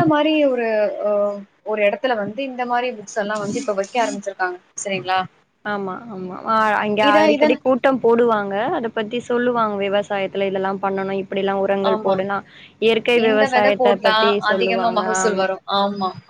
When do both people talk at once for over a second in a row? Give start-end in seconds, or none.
13.3-15.4